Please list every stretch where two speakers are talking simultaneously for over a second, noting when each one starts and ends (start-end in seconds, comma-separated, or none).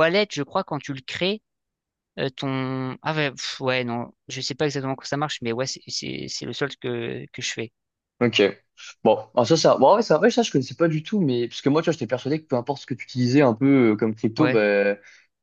none